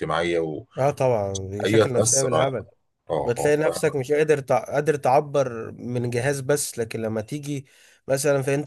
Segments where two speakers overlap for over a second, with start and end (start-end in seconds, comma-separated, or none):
none